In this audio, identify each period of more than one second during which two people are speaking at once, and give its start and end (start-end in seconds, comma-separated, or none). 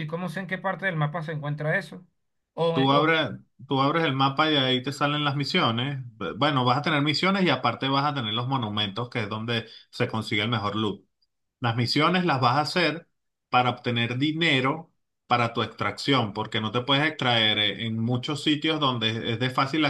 none